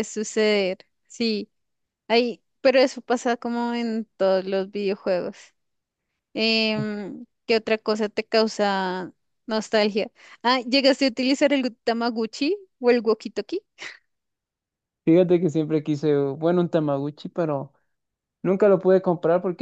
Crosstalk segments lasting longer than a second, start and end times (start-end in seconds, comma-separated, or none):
none